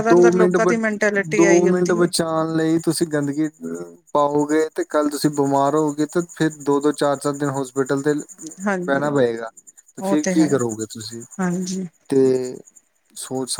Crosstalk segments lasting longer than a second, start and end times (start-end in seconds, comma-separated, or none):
none